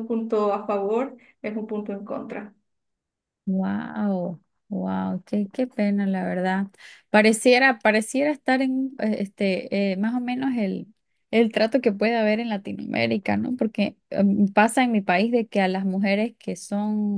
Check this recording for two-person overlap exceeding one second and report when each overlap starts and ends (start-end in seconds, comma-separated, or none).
none